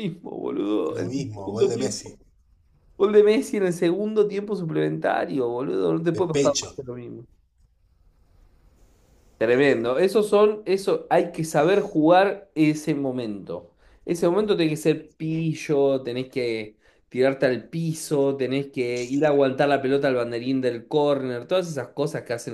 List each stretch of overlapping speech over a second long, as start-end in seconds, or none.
0.9-2.2